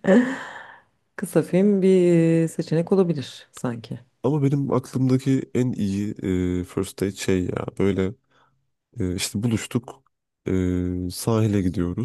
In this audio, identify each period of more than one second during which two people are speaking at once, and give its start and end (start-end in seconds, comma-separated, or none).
none